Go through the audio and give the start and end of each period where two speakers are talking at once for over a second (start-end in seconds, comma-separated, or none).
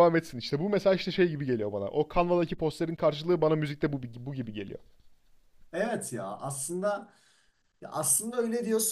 none